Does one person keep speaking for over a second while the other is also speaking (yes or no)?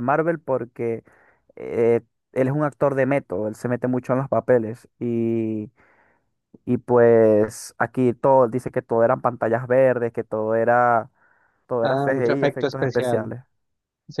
yes